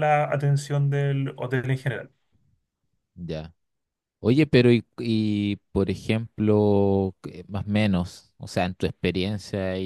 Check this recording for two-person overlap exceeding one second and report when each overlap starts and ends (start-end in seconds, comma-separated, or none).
none